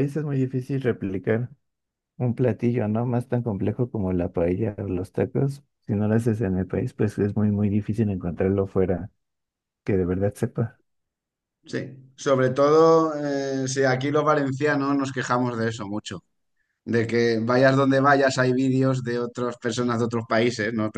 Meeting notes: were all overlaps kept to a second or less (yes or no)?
yes